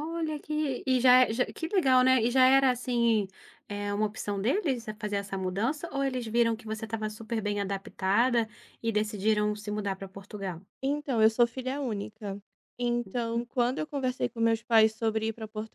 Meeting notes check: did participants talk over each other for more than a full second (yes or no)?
no